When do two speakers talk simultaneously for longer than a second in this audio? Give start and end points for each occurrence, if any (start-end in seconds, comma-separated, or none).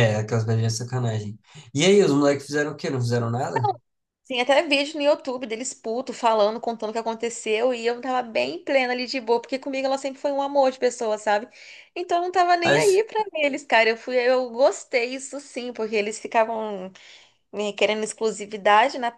none